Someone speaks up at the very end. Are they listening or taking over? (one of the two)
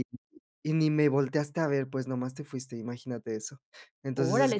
taking over